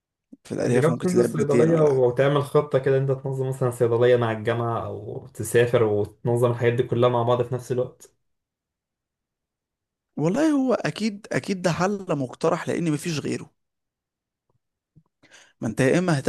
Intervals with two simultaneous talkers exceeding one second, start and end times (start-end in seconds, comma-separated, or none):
0.6-2.2